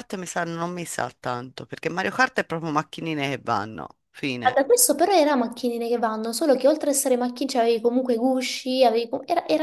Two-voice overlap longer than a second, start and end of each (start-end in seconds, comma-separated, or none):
none